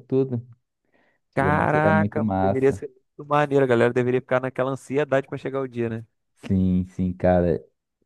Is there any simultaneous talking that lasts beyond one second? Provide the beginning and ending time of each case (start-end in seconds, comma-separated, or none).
1.3-2.8